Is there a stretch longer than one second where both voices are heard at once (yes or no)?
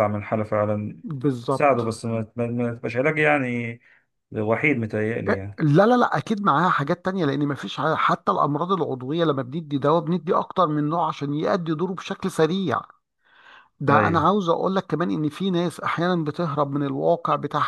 no